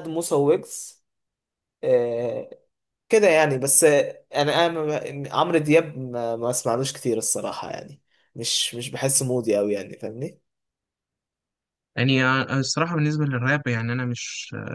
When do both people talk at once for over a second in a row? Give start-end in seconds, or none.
none